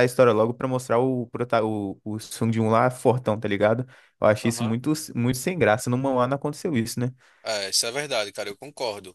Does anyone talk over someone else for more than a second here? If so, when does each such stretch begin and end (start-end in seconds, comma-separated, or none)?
none